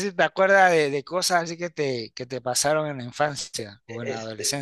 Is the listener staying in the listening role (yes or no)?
no